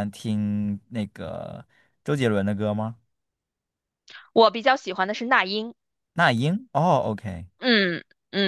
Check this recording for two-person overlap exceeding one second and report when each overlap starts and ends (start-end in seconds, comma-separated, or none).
none